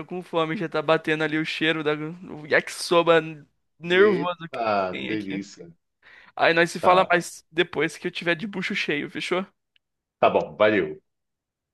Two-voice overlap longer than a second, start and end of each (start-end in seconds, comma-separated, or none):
3.8-5.5